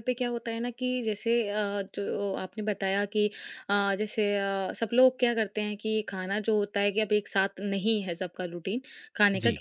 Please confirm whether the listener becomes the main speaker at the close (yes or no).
no